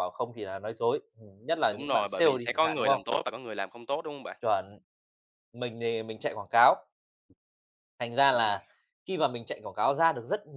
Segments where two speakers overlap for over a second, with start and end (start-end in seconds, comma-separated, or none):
1.7-3.1